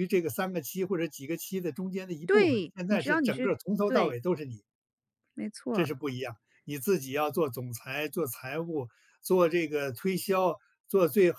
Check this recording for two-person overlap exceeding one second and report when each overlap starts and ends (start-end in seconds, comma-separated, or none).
2.3-4.2